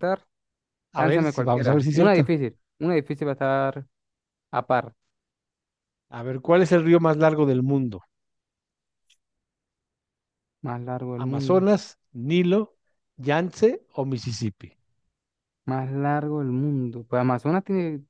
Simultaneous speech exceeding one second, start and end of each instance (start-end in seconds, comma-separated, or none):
1.0-2.2